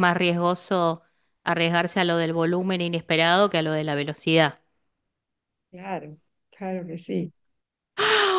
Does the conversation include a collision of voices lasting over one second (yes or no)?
no